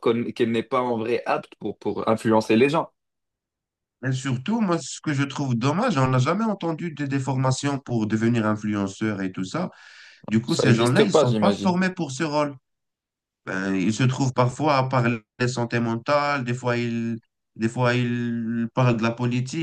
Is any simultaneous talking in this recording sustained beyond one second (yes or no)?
yes